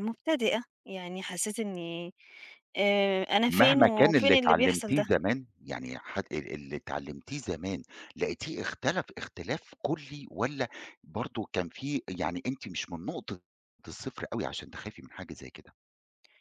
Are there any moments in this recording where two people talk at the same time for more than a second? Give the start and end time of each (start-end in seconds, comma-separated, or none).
3.5-5.0